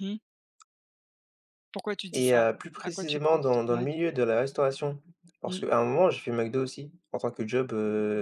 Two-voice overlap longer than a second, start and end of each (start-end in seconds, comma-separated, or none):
2.1-3.9